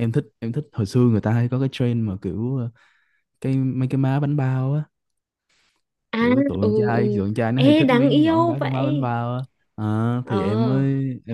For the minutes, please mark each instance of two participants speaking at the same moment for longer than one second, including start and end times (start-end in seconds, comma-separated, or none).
6.2-9.1